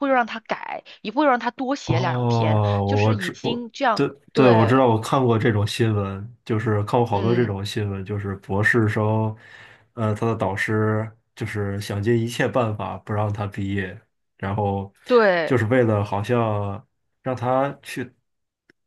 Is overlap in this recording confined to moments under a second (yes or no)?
no